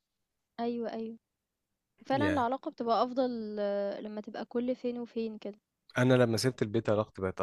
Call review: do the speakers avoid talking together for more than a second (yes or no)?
yes